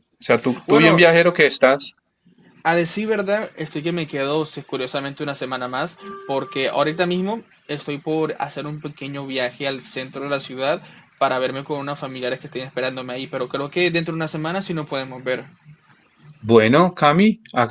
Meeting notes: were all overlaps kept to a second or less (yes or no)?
yes